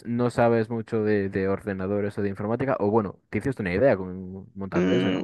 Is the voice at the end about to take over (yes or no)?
yes